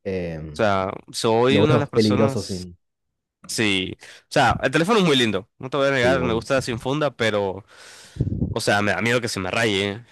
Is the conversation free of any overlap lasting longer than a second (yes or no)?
no